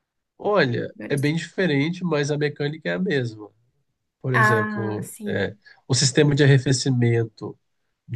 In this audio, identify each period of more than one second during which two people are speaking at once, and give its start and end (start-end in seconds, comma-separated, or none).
4.3-5.6